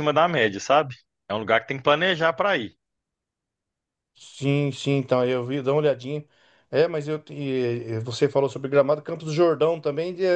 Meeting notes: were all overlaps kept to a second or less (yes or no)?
yes